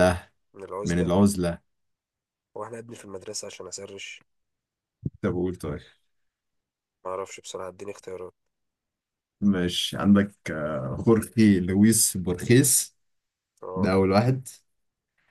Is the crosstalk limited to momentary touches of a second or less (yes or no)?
yes